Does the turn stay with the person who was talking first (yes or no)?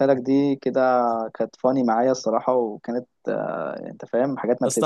no